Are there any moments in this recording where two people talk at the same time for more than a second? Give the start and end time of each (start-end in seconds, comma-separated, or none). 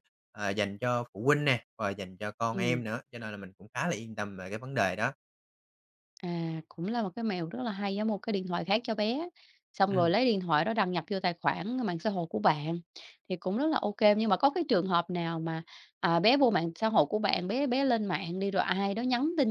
none